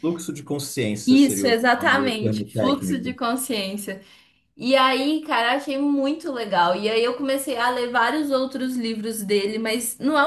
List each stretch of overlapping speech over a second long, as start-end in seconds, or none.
1.1-3.2